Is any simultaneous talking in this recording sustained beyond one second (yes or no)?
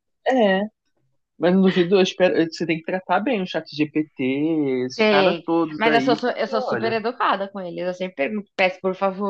yes